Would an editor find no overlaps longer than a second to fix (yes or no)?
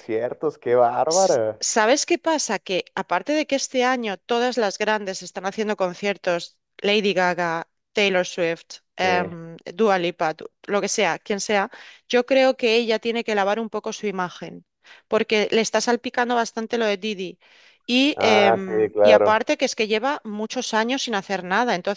no